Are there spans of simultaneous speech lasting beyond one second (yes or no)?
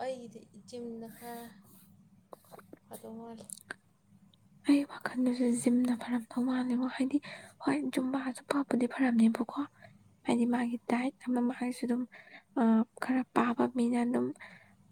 no